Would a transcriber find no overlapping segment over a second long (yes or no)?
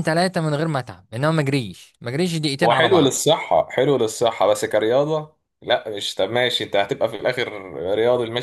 yes